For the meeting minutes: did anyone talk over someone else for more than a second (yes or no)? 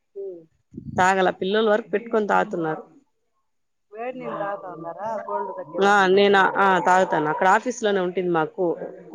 no